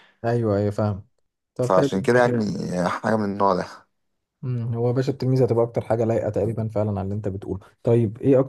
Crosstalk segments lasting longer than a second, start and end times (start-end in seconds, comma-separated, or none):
none